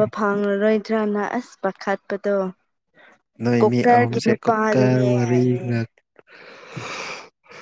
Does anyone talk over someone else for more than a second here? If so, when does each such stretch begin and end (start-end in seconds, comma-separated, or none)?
3.6-5.7